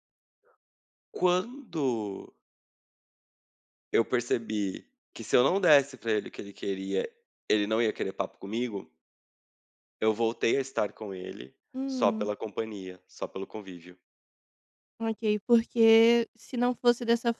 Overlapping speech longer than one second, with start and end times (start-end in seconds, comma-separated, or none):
none